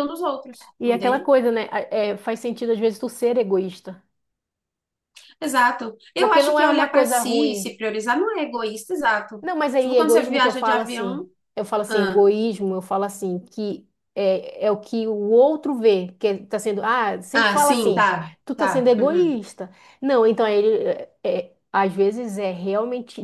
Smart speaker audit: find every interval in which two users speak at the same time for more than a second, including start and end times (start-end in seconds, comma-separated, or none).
6.2-7.7, 9.4-11.2, 17.3-19.4